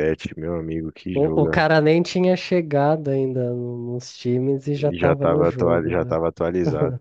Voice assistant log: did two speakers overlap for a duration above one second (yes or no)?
yes